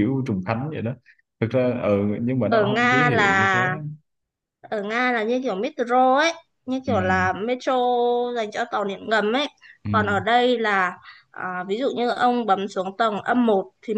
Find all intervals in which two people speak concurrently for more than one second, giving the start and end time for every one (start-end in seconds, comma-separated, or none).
2.5-3.7